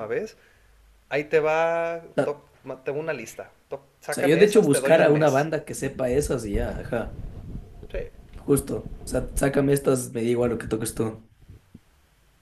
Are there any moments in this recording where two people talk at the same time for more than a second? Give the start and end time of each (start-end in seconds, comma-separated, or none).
4.1-5.5